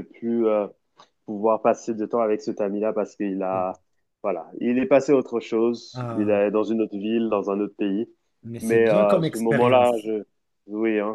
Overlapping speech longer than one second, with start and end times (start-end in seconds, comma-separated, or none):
8.6-10.1